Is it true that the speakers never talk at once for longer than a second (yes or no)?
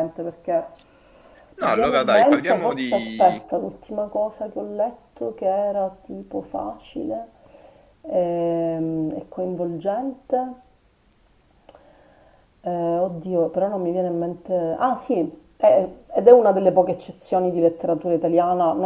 no